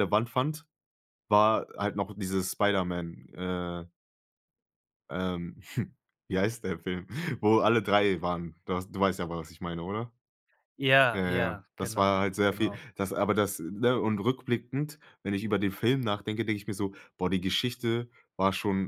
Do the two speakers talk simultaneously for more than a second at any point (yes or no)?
yes